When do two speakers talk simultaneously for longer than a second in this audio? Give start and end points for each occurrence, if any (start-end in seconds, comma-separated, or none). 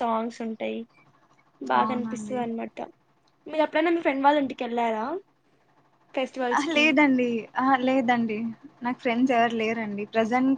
none